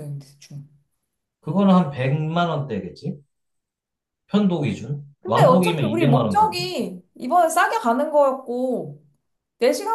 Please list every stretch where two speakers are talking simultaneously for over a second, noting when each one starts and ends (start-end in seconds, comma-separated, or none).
5.2-6.7